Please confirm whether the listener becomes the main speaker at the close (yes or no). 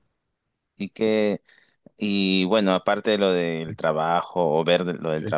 no